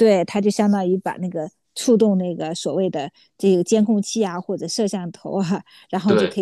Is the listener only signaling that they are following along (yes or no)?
yes